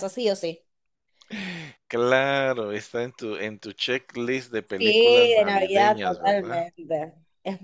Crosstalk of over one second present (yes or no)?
yes